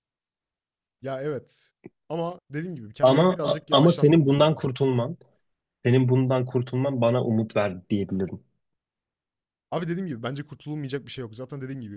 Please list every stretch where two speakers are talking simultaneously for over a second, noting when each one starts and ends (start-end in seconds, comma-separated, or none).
3.0-4.7